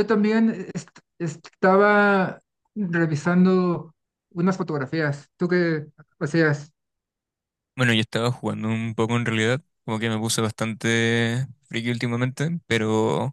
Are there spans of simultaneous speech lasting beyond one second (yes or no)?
no